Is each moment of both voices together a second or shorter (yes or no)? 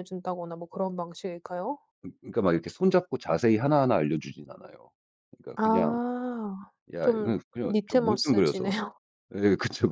no